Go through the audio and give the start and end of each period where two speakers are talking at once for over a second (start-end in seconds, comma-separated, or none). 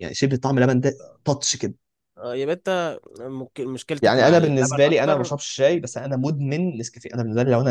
4.0-5.3